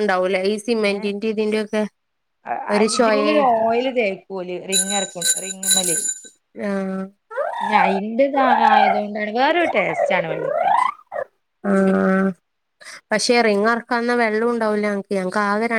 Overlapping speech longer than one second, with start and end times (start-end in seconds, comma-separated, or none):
none